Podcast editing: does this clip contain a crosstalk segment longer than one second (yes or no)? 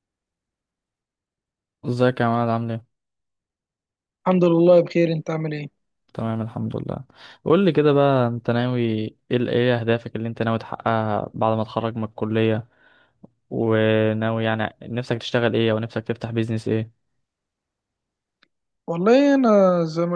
no